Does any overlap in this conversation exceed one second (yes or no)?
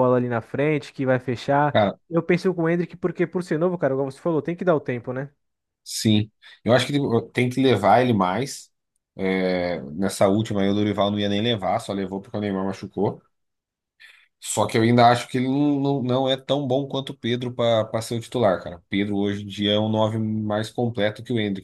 no